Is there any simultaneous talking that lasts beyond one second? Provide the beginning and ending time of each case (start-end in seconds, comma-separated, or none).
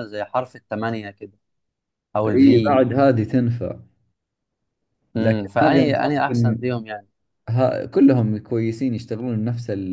5.2-6.6